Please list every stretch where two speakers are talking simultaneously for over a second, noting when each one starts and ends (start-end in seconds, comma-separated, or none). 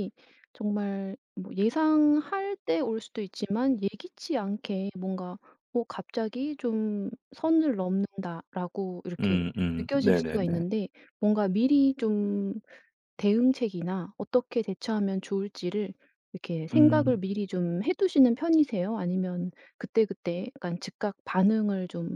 9.2-10.7